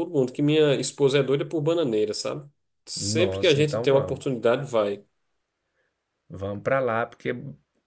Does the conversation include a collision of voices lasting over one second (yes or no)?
yes